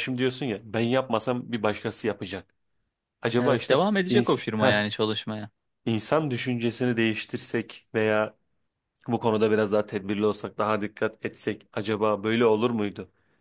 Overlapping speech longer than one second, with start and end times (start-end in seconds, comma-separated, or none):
3.4-4.9